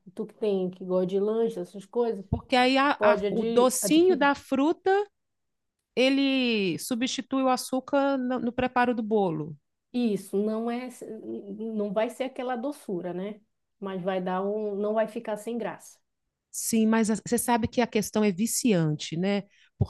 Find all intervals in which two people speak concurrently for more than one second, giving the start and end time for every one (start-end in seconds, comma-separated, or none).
3.0-4.3